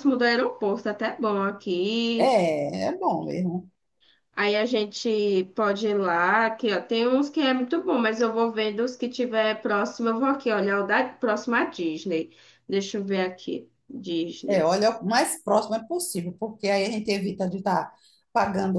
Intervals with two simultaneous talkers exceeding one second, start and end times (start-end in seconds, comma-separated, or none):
none